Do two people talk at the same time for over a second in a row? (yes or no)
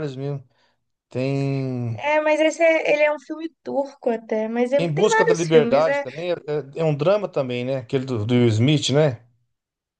yes